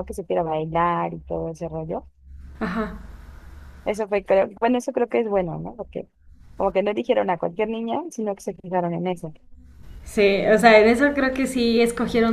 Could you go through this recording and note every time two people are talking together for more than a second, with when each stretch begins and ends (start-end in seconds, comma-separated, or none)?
none